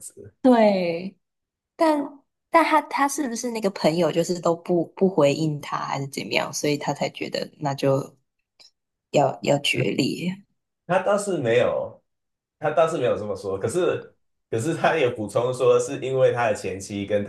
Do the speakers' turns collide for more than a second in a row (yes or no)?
no